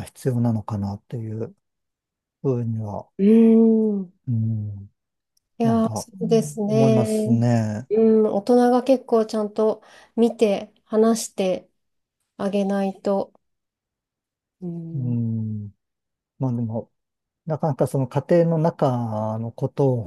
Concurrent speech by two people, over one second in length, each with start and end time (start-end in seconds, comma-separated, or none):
5.6-7.4